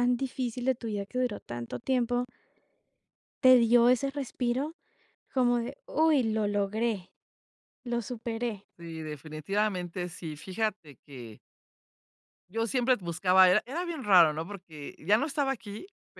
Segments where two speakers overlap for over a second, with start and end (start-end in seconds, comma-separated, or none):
none